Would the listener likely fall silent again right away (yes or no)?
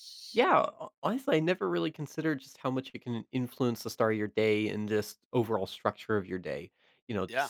yes